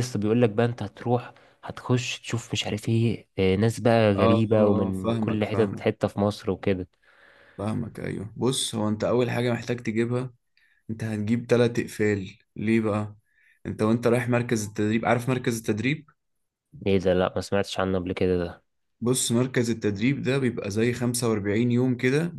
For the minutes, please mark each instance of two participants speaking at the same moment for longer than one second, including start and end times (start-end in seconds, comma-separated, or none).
4.2-5.8